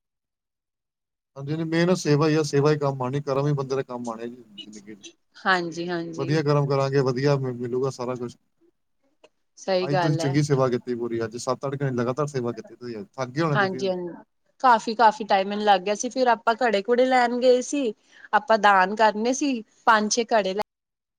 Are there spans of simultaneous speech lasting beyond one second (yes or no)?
no